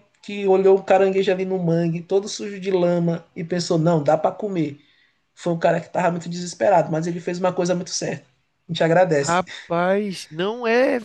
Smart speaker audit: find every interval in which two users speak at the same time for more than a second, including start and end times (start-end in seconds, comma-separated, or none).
none